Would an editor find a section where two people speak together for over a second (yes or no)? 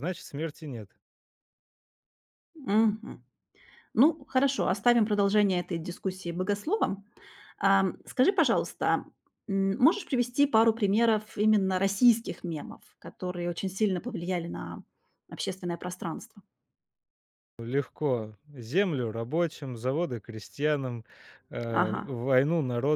no